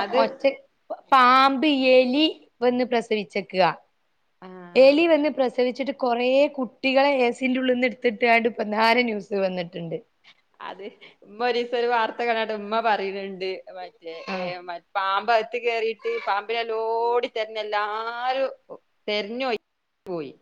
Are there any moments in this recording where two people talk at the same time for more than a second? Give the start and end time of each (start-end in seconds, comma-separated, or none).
none